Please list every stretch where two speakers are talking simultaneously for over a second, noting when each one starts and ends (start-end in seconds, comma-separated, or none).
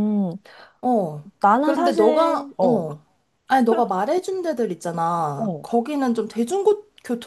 1.4-2.8